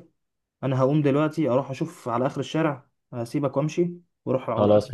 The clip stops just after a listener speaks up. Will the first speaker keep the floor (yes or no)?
yes